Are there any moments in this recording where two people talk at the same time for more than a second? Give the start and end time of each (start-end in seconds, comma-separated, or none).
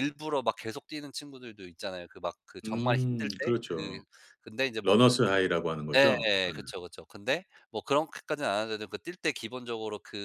2.6-4.0